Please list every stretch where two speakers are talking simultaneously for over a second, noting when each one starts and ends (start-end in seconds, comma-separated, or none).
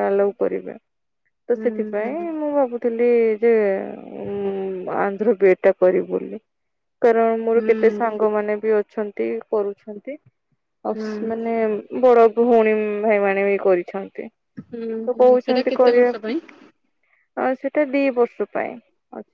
14.7-16.4